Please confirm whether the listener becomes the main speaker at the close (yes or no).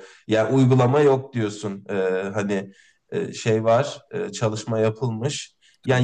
no